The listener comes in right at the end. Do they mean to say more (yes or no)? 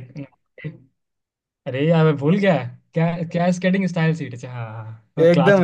yes